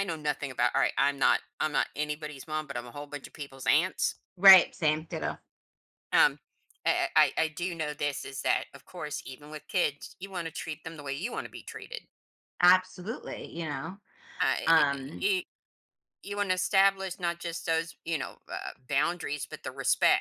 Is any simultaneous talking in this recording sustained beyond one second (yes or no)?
no